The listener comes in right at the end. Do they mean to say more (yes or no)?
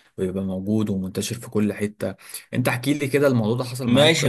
yes